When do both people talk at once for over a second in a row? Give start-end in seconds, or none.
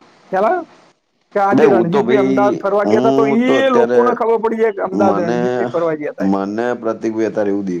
1.5-4.0